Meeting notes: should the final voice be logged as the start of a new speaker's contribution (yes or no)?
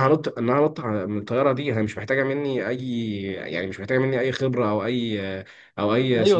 no